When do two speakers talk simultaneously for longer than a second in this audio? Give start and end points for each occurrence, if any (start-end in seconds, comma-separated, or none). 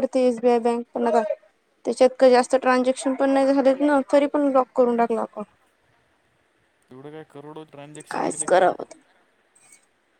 none